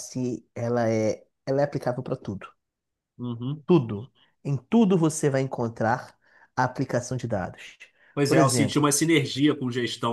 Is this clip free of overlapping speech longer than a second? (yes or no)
yes